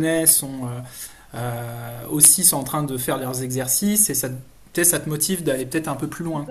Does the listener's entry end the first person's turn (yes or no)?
yes